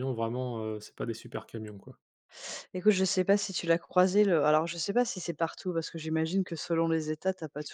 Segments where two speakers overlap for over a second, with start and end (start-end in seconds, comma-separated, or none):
none